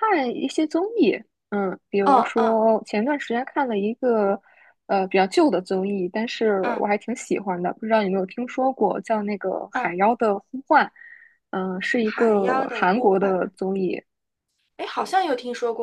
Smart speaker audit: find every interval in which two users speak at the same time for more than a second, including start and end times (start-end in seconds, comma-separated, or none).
12.0-13.3